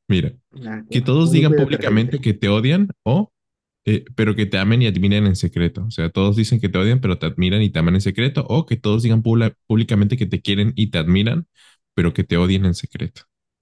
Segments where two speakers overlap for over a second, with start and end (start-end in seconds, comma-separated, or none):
0.9-2.2